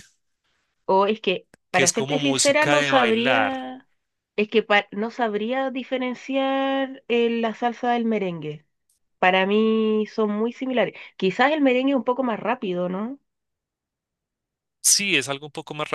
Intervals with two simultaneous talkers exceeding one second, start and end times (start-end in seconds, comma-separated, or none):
1.7-3.7